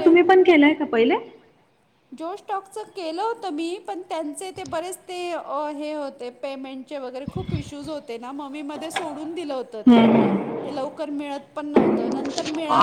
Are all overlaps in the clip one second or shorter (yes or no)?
yes